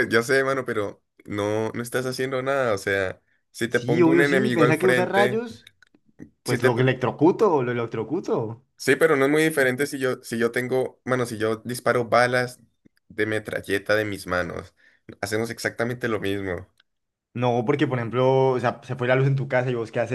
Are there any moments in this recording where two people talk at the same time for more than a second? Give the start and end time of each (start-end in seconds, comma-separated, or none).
3.7-5.4